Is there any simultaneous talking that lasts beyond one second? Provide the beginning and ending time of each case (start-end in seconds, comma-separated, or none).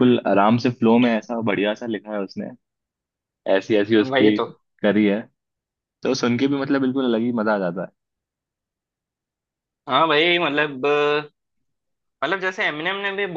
none